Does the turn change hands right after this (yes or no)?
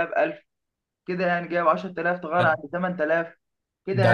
yes